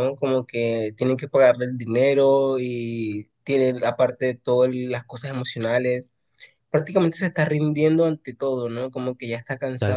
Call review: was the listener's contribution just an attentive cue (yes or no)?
no